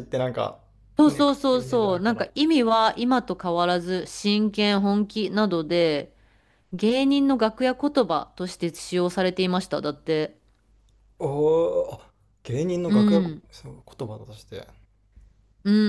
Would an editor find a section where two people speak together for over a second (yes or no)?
yes